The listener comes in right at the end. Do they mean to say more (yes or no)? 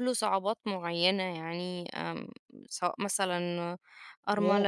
yes